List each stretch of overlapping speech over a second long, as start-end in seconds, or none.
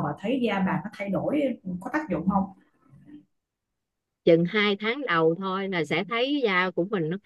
none